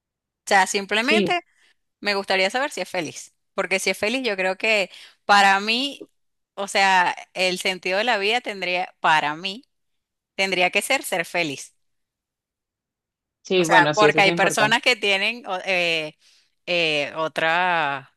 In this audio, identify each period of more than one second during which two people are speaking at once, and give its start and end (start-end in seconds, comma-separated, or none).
13.6-14.8